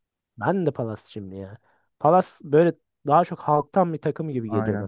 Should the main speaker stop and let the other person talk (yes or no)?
yes